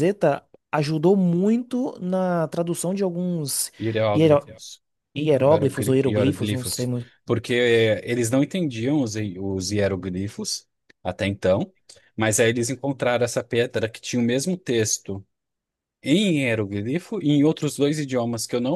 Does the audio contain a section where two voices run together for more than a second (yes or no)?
yes